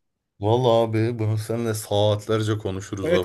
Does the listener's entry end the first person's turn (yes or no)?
yes